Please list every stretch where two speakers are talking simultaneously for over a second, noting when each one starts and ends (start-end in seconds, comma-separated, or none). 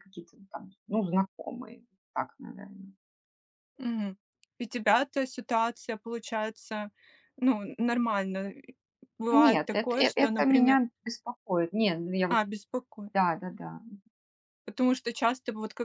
9.3-10.8